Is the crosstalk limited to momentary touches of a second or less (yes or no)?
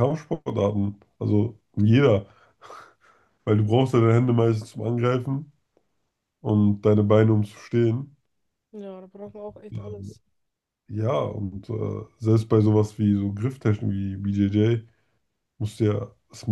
yes